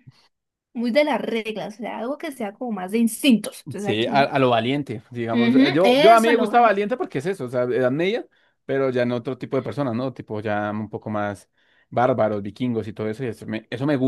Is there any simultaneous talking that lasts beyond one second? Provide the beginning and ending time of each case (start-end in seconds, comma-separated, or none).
5.3-6.5